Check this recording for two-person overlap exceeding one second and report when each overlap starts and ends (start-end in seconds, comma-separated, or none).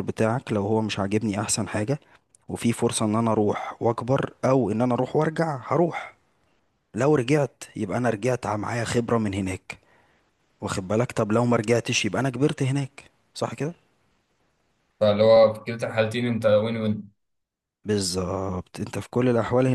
none